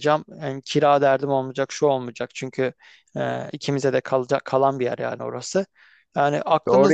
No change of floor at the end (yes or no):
no